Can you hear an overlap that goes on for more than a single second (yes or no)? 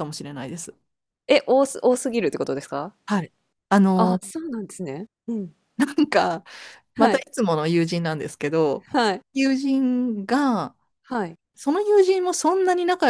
no